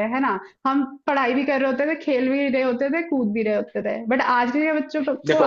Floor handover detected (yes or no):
no